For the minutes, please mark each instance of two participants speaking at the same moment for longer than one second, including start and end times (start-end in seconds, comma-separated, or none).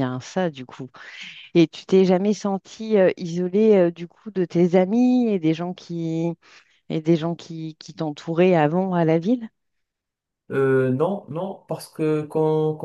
none